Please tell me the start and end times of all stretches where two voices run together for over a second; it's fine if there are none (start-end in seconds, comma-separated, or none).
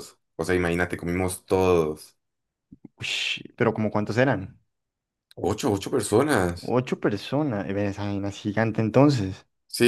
none